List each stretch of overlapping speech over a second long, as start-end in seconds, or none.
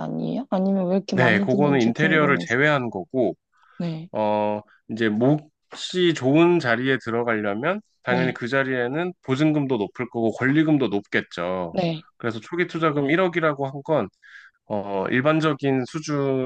1.1-2.6